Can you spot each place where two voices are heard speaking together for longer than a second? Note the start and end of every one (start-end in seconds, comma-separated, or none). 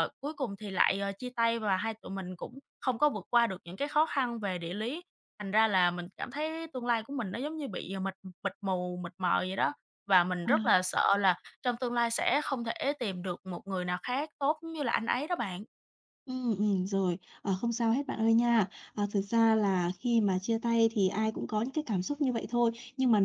none